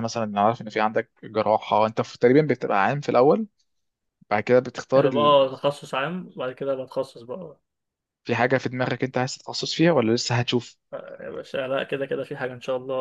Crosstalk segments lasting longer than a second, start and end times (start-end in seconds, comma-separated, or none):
none